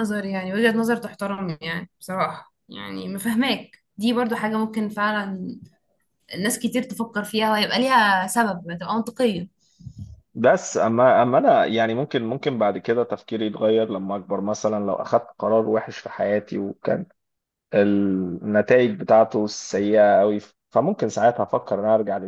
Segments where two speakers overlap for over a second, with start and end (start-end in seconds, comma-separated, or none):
none